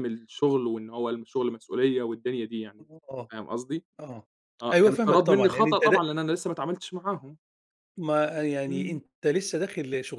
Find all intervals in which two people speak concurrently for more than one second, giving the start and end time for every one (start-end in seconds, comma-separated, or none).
4.7-6.0